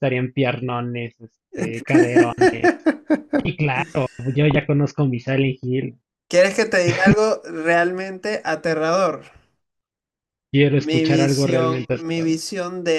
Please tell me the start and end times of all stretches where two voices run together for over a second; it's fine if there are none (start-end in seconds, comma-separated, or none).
10.8-12.4